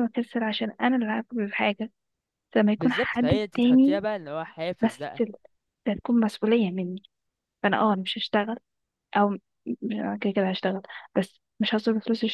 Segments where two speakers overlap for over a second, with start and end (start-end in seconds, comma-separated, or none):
2.8-4.0